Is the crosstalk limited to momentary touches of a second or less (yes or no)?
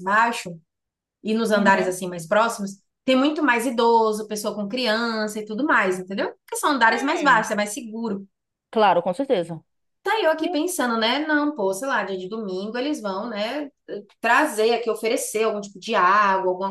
yes